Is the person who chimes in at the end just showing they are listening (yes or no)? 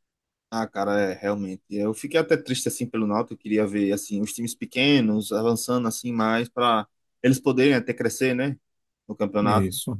yes